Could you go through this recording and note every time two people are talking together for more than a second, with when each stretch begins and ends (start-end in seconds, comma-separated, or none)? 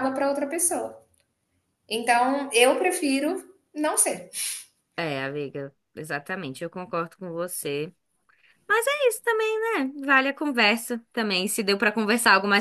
none